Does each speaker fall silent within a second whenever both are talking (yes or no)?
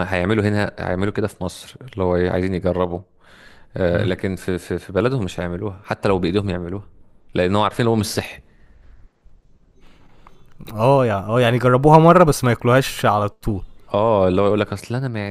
yes